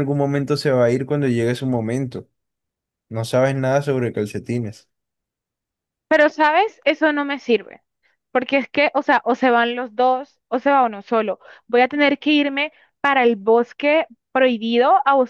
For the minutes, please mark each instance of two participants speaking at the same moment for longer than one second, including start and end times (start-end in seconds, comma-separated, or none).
none